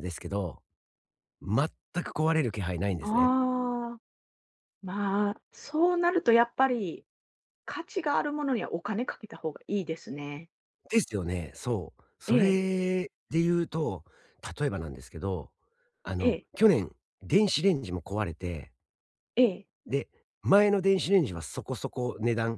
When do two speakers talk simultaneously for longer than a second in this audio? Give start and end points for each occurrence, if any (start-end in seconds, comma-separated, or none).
none